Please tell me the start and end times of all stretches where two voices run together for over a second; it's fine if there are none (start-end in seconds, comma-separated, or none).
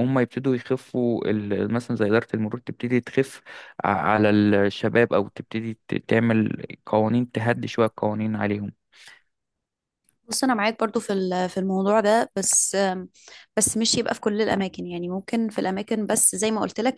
none